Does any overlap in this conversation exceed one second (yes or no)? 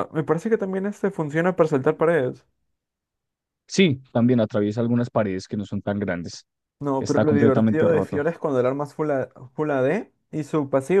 yes